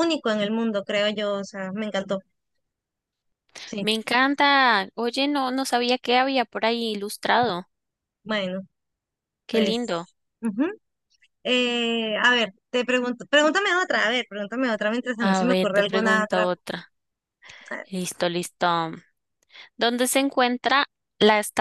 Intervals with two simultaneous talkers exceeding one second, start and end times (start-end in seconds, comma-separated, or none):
15.2-16.5